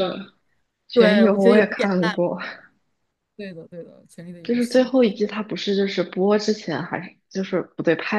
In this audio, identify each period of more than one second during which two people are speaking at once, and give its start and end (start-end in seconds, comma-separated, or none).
0.9-2.1